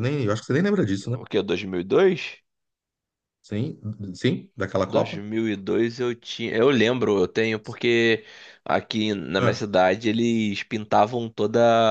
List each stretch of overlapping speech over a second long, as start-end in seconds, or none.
none